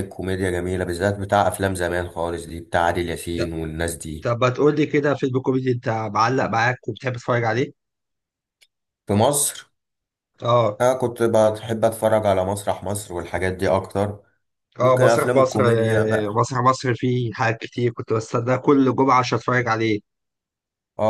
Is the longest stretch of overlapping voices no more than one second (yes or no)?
no